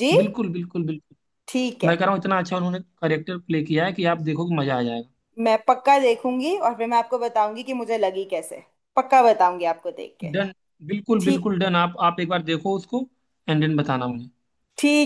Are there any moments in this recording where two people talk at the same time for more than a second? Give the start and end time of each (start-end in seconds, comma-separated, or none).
none